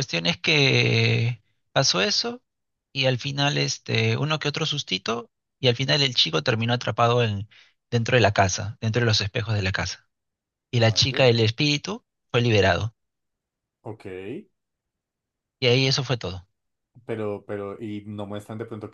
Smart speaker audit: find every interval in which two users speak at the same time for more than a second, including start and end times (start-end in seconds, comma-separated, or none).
none